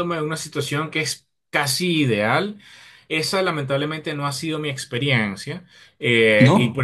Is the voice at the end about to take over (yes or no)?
no